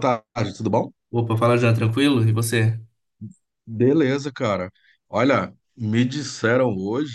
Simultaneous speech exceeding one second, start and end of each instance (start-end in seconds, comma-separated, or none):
none